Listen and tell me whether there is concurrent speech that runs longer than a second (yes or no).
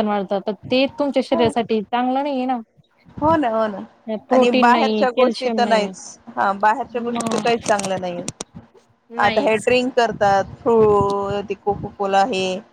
yes